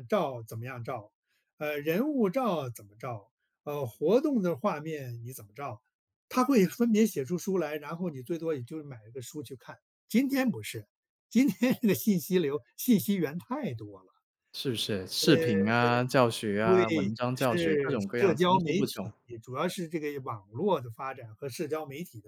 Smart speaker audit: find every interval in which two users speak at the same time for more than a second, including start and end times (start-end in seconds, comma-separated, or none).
16.6-19.1